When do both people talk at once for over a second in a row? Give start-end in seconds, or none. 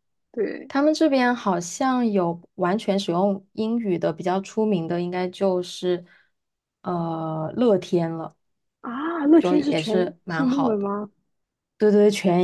9.4-10.9